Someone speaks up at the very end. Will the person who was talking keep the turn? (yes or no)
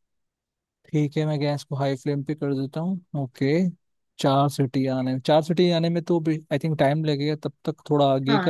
no